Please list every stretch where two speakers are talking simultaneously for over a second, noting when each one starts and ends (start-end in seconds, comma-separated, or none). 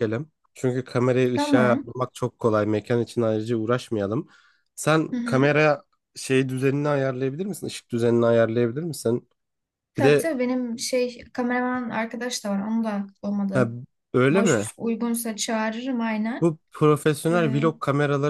none